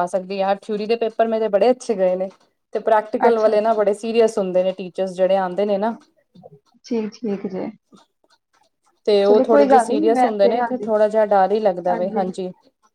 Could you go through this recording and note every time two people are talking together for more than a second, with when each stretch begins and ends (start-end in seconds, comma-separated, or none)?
9.3-10.9